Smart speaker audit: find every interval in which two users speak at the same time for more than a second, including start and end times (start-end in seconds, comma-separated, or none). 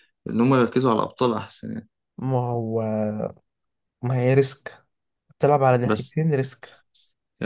none